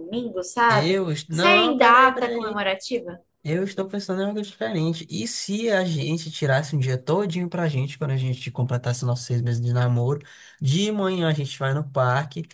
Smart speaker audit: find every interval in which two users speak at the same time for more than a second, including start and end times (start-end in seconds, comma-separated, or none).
0.7-2.6